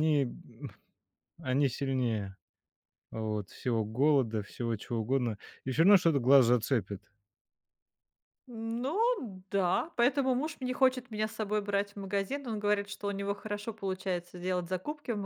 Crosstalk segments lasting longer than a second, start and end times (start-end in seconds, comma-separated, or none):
none